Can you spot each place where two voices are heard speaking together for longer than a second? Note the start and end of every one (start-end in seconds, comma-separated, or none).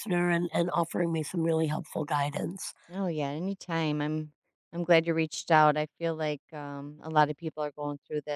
none